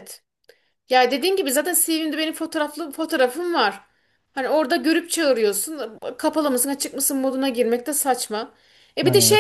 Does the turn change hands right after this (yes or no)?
no